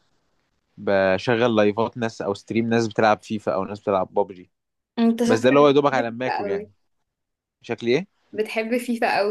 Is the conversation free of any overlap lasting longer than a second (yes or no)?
no